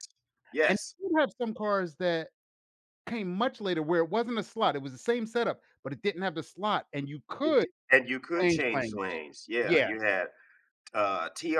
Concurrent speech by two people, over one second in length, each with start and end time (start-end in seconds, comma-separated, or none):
none